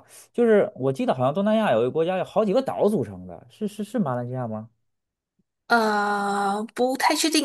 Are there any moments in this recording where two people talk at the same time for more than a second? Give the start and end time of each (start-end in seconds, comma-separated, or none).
none